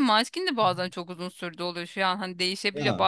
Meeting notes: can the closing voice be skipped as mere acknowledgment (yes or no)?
yes